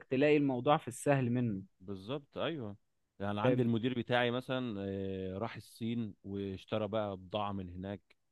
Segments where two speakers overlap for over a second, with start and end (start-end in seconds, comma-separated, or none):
none